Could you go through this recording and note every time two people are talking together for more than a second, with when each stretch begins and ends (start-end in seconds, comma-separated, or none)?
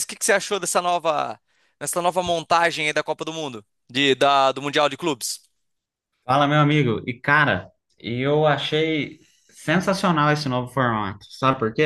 none